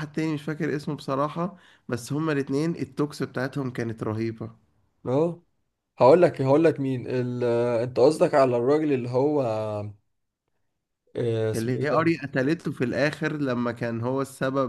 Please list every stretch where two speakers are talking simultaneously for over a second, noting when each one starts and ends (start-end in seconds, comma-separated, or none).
none